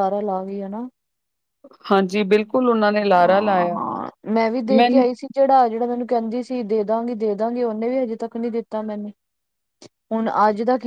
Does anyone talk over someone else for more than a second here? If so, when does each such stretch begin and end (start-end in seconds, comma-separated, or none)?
none